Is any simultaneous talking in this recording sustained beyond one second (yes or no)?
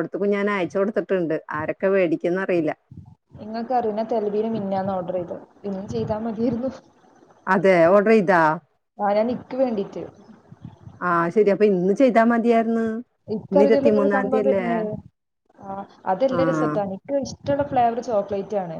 no